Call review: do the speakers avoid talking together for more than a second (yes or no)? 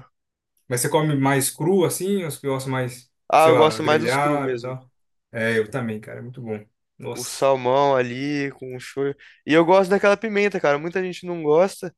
no